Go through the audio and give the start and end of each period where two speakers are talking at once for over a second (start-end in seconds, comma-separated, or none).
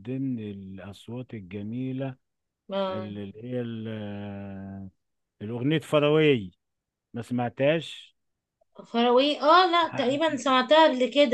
none